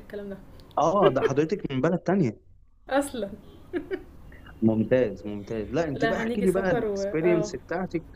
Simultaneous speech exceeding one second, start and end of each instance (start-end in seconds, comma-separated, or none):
5.9-7.5